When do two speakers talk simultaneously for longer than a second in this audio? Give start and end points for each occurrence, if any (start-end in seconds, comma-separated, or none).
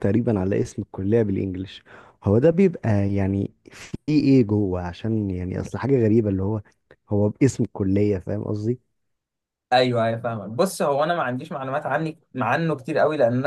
none